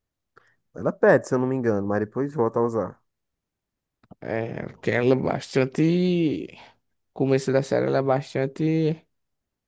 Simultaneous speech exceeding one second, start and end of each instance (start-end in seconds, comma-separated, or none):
none